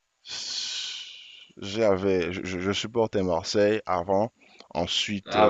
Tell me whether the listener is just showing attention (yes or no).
no